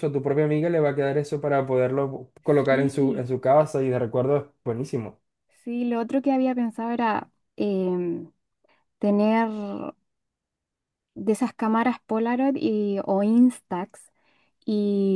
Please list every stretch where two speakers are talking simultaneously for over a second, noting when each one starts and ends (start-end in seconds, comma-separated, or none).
none